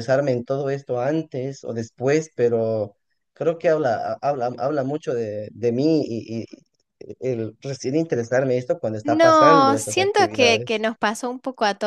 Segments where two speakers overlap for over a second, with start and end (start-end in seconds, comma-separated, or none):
9.0-10.8